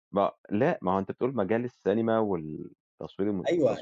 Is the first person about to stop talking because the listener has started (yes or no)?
yes